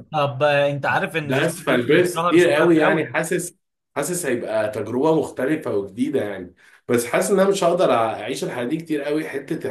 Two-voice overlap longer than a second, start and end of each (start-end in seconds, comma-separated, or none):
1.2-3.2